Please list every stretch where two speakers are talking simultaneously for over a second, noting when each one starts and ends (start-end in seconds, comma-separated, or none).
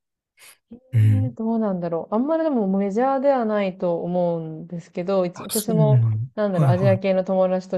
5.3-7.0